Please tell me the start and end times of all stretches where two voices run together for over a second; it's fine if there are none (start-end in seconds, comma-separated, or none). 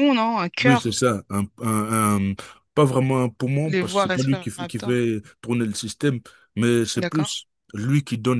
3.6-5.0